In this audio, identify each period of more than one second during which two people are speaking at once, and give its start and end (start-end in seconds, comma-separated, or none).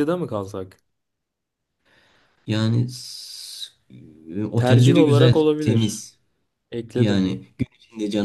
4.6-6.1